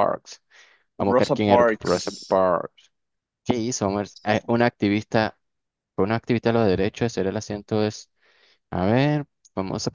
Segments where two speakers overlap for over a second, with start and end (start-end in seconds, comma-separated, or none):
1.0-2.4